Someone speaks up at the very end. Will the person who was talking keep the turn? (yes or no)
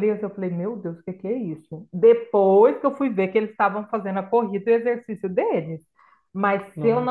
yes